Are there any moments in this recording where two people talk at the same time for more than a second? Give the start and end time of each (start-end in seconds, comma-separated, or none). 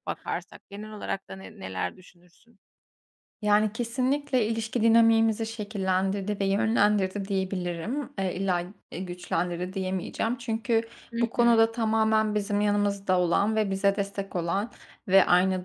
none